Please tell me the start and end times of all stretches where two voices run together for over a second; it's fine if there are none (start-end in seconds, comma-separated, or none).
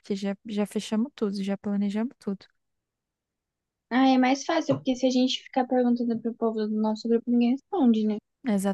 none